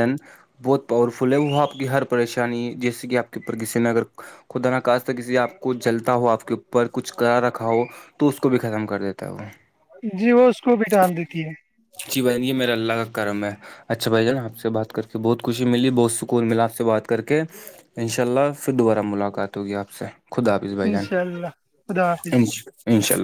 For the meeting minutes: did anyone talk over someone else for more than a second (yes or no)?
yes